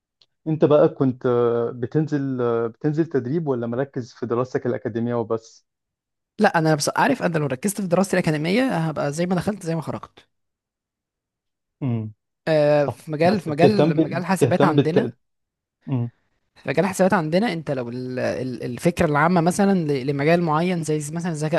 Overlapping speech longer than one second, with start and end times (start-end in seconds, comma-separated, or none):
12.8-15.1